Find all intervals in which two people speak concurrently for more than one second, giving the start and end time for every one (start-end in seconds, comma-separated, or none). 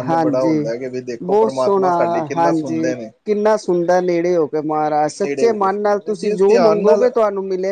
5.2-7.1